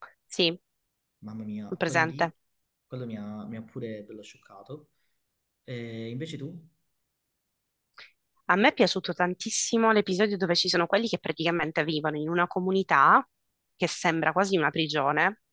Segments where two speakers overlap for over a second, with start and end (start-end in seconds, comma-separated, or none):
none